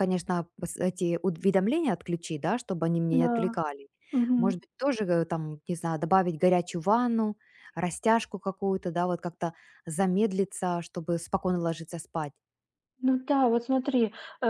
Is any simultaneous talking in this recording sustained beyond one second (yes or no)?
no